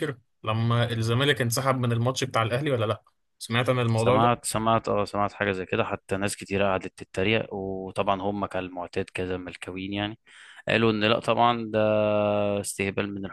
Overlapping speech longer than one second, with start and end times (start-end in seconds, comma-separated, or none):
none